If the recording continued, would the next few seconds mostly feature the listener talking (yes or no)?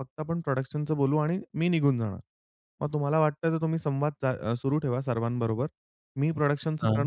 no